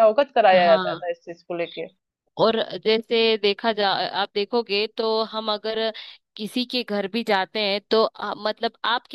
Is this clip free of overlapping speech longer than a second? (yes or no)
yes